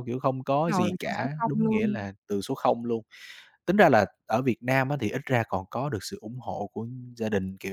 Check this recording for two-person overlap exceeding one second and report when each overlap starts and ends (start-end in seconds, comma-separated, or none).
0.5-2.1